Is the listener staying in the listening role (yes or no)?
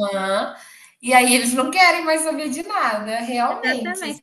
no